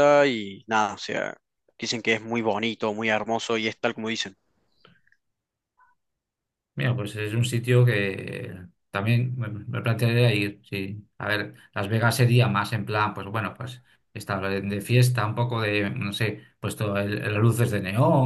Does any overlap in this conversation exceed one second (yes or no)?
no